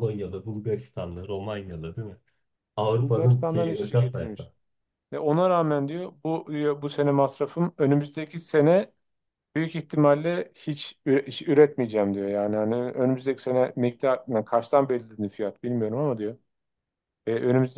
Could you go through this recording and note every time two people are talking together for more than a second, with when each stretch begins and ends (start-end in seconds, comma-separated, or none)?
3.0-4.5